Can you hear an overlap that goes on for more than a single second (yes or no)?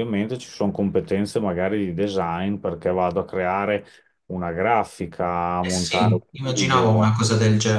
yes